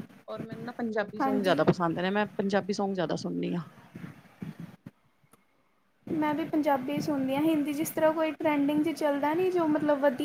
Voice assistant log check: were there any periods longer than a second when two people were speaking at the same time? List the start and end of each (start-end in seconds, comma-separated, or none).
none